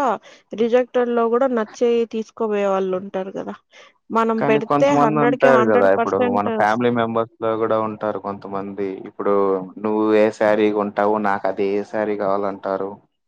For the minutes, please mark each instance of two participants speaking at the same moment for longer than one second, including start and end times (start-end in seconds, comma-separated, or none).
4.4-6.5